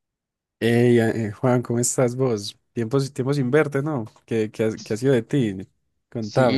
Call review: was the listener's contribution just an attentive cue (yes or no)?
no